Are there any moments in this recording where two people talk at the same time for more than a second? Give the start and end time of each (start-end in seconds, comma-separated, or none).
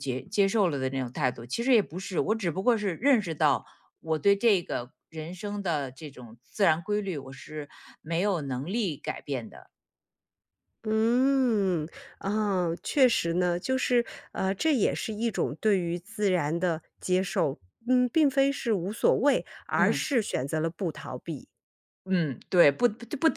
none